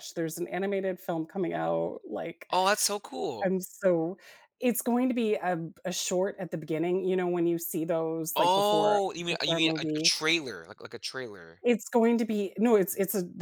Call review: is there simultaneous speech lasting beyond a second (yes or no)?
yes